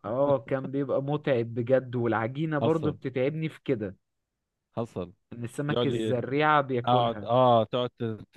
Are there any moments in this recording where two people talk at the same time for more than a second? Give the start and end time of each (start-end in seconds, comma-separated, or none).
none